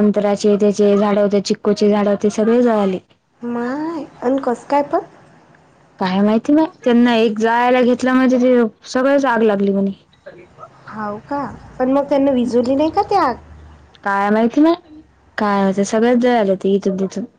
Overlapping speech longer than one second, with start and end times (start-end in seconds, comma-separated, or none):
none